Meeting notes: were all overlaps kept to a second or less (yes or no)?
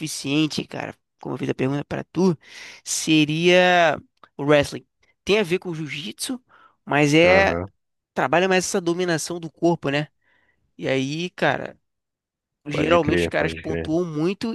no